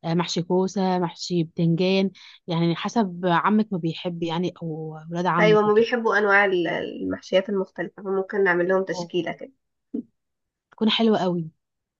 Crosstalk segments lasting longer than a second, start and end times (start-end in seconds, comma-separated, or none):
none